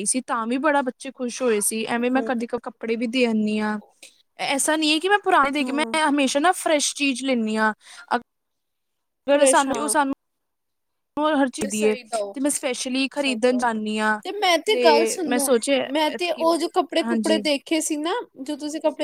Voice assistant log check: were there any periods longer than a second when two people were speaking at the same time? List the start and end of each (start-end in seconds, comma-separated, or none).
16.1-17.4